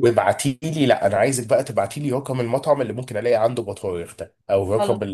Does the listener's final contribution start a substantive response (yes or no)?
no